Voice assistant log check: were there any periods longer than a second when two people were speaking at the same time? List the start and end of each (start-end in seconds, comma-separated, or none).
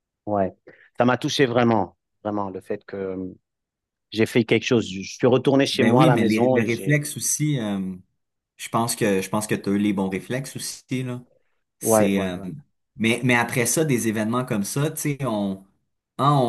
5.7-7.0